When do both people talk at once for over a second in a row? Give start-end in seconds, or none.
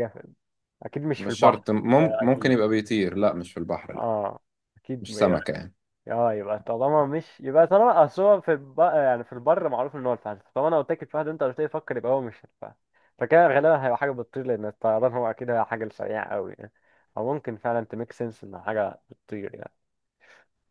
1.2-2.6